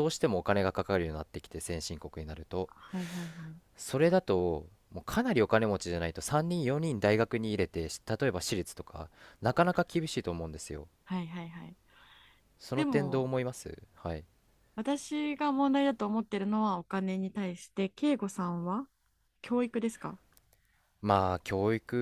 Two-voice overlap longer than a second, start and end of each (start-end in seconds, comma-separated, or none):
none